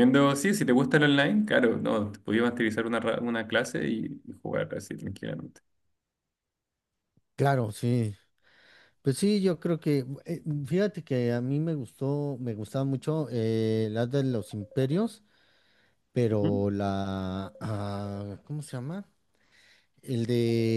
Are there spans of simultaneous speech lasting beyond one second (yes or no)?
no